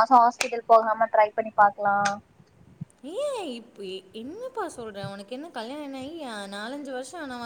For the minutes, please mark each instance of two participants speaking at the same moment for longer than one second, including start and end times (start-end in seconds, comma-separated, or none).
none